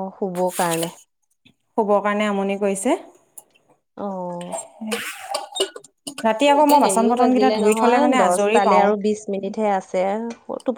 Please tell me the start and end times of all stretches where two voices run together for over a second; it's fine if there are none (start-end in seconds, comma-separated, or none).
6.6-8.9